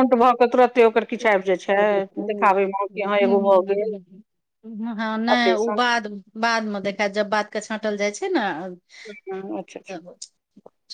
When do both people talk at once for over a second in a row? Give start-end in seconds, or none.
none